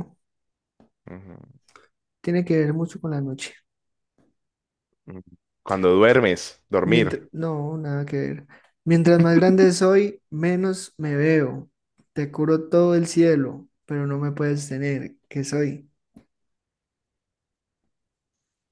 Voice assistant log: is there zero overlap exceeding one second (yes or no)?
yes